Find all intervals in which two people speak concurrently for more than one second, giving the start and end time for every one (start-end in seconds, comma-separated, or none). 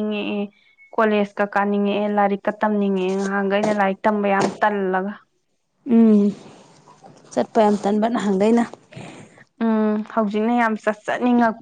none